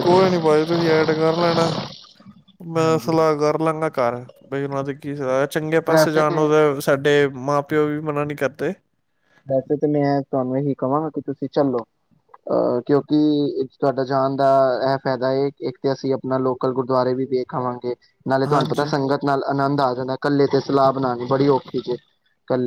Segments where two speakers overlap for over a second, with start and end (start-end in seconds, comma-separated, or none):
none